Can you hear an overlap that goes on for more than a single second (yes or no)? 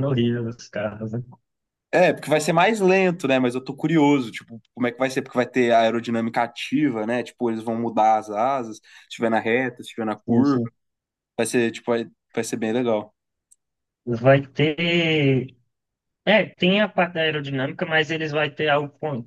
no